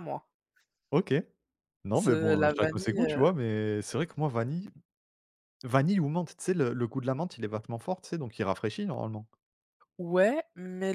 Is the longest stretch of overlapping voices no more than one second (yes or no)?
no